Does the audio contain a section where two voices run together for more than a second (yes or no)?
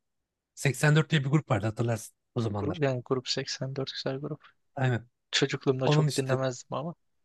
no